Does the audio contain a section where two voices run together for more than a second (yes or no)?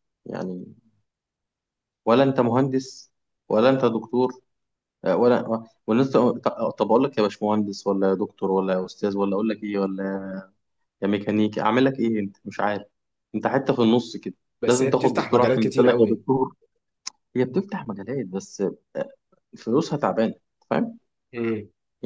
yes